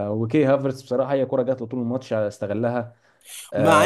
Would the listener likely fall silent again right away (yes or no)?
no